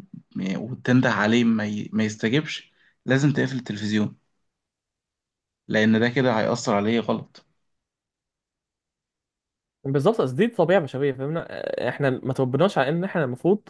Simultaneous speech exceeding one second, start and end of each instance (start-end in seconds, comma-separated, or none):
none